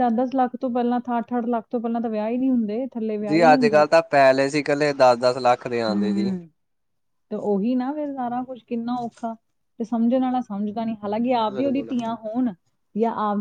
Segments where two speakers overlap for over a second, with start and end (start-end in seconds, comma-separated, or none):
none